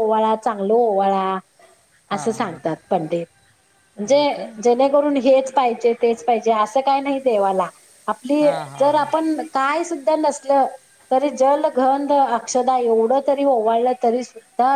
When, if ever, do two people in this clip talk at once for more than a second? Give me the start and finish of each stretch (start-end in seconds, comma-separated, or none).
none